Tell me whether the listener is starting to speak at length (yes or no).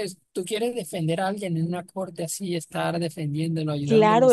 yes